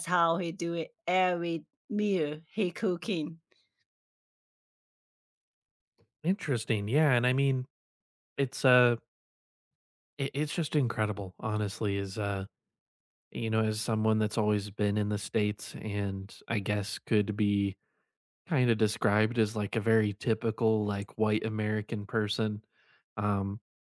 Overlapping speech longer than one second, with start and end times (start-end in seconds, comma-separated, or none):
none